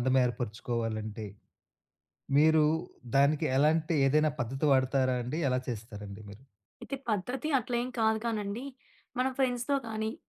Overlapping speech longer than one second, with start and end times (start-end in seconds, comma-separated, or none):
none